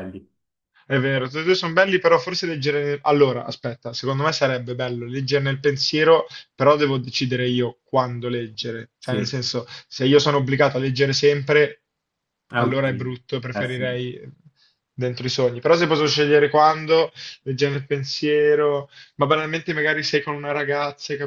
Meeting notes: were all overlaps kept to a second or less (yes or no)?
no